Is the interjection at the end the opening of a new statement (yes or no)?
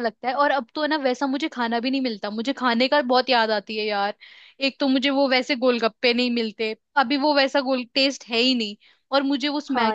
no